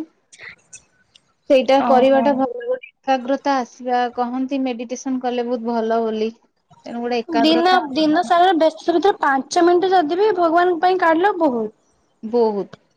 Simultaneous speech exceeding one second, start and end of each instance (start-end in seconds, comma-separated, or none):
none